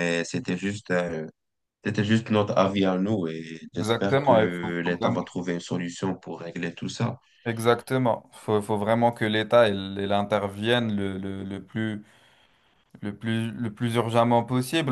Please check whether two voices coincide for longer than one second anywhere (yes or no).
yes